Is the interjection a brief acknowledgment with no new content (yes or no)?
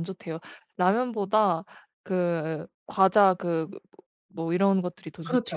no